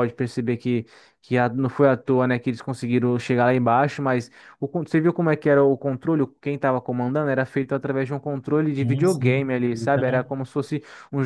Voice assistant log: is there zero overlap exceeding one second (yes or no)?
no